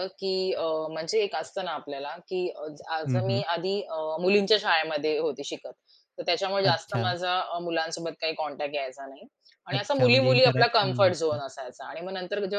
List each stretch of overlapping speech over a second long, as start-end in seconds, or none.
9.7-11.4